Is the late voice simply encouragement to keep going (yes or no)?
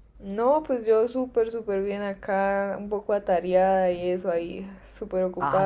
no